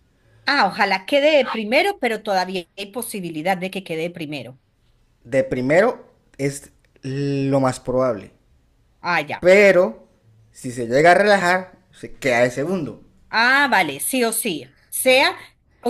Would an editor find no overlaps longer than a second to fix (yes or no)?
yes